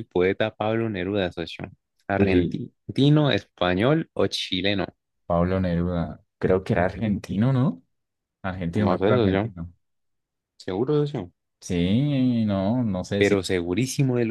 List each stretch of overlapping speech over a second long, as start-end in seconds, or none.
none